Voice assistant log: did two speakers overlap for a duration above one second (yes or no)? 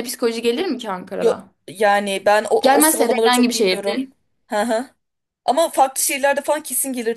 yes